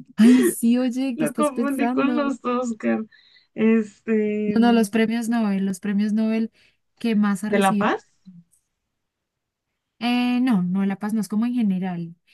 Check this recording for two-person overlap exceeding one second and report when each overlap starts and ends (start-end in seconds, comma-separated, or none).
1.1-2.4